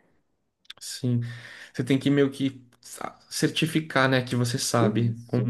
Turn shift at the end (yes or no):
yes